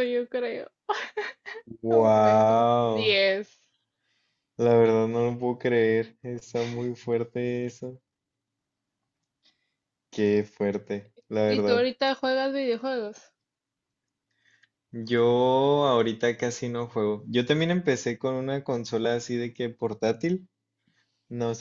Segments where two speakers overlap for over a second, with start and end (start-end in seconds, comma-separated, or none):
1.9-3.2